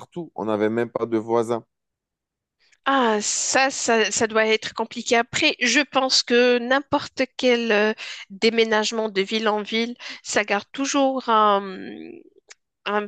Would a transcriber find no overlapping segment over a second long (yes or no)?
yes